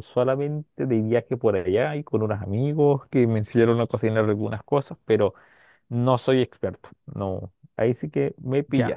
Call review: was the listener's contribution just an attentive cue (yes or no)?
no